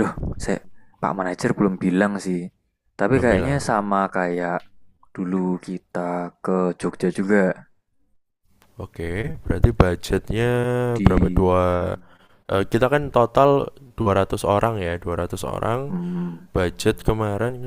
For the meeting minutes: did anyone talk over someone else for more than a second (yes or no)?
no